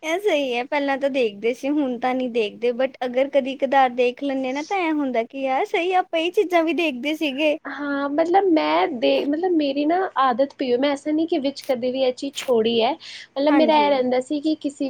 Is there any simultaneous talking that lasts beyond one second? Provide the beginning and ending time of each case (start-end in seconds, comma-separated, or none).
none